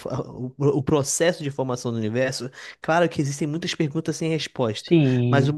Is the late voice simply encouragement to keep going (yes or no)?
yes